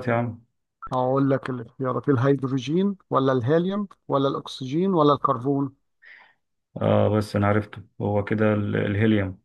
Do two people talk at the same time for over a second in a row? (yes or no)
no